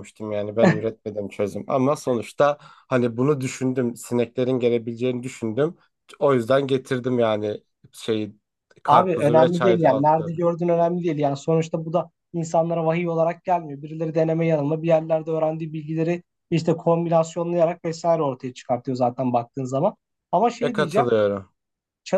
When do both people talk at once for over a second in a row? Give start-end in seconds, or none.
8.9-10.3